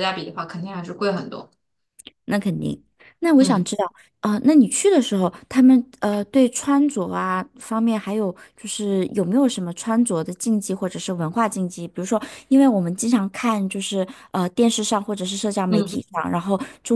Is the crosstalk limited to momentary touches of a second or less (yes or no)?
yes